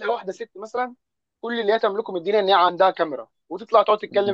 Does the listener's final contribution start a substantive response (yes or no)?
no